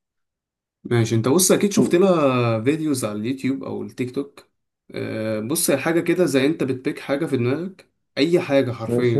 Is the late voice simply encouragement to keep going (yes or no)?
yes